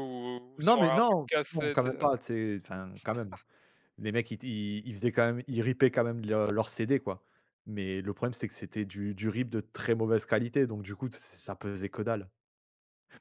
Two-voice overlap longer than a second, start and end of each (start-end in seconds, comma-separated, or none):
0.6-2.1